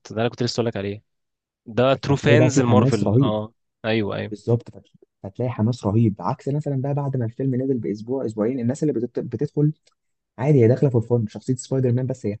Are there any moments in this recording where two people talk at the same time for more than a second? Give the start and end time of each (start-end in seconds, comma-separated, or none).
2.0-3.3